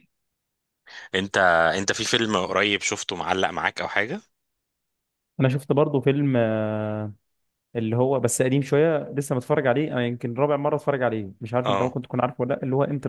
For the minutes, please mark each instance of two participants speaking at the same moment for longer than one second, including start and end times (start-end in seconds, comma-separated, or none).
none